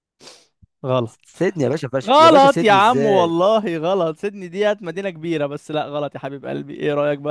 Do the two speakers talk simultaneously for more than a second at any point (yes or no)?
yes